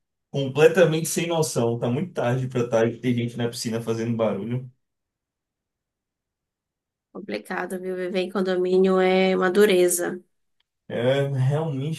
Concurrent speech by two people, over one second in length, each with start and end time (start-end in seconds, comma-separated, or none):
none